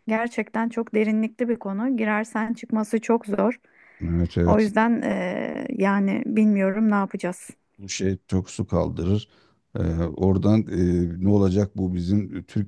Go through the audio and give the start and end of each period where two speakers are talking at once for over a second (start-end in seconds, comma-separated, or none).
none